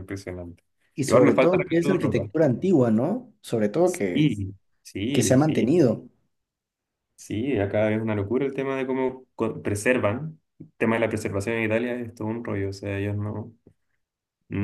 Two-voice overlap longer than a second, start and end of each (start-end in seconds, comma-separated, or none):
1.1-2.3